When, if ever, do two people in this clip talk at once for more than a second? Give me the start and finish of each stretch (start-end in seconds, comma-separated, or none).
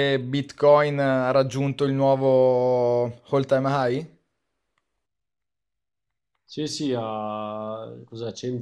none